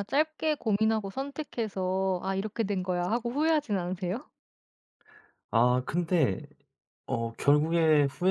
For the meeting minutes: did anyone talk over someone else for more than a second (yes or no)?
no